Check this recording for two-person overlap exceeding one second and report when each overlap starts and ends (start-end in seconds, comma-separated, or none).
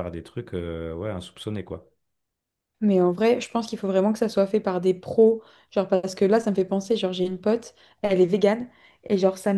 none